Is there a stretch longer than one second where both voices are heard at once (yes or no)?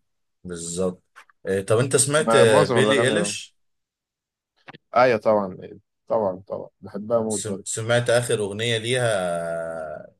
yes